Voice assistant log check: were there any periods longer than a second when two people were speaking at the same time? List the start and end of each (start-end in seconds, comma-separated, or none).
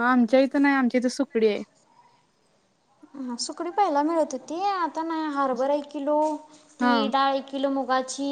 none